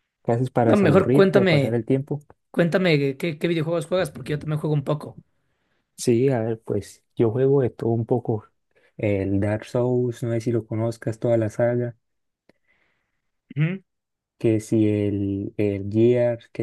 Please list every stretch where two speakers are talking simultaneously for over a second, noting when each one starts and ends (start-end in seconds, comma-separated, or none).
0.6-1.8